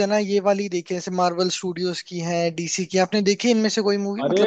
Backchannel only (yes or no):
no